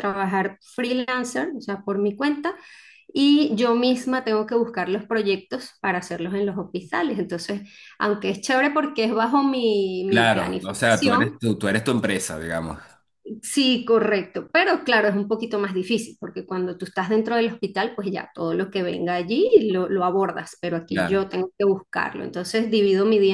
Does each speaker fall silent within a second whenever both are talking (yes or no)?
no